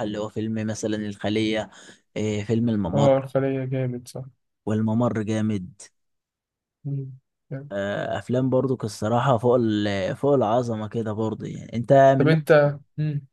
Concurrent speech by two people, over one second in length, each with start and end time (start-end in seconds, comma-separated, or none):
none